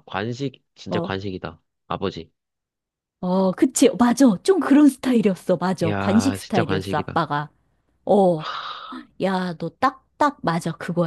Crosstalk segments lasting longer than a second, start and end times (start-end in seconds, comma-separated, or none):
5.8-7.2